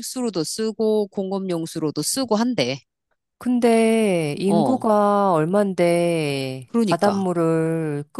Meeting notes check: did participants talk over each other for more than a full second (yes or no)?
no